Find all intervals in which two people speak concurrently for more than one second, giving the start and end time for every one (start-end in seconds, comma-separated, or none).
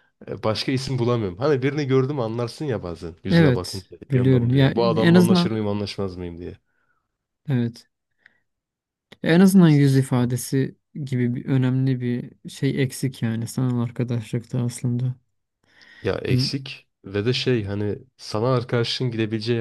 3.3-5.6